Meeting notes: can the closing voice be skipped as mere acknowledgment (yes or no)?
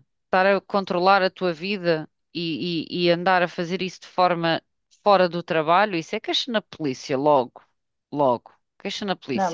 no